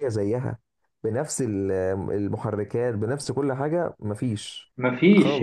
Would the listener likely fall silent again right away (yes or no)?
no